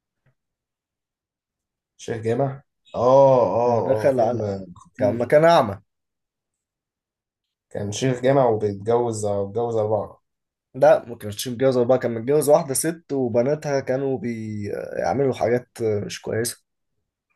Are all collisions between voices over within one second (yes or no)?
no